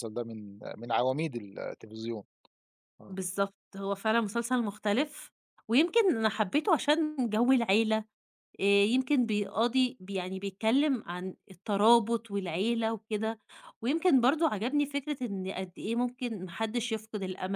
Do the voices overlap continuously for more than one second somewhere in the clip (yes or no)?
no